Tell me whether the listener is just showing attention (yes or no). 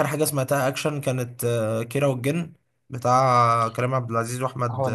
yes